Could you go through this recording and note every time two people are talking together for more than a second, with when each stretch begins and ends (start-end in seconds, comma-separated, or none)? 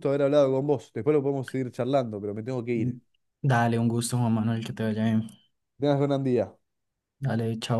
none